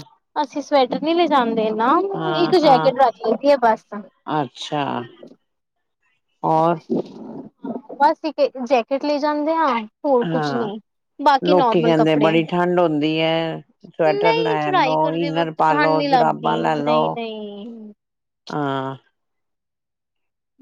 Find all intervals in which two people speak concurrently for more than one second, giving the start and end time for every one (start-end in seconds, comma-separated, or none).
14.1-17.0